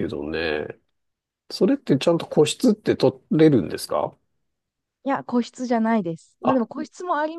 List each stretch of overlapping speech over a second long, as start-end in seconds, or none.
none